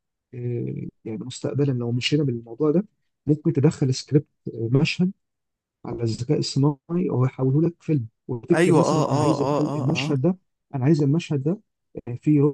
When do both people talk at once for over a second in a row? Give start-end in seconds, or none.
8.5-10.2